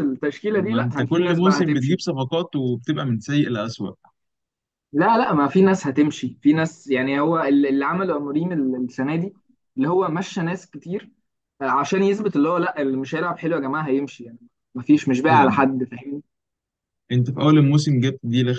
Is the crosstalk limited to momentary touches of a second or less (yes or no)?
no